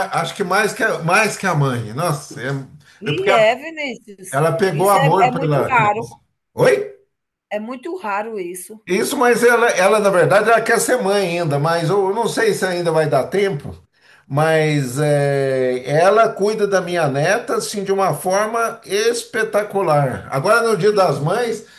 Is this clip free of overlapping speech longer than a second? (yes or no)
no